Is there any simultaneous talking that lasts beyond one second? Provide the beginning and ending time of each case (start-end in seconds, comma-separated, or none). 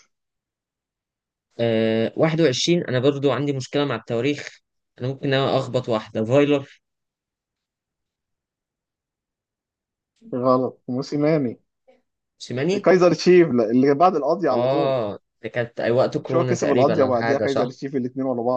16.2-17.8